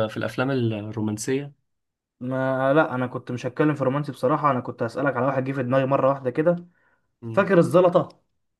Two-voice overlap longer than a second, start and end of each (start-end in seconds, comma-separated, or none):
none